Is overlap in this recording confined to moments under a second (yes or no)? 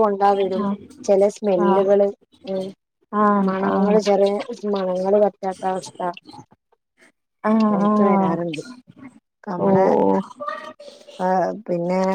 yes